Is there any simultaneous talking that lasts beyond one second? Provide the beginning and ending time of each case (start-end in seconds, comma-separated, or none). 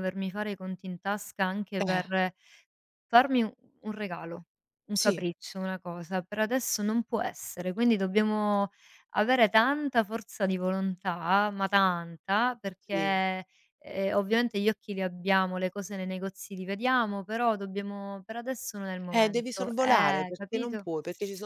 19.1-20.8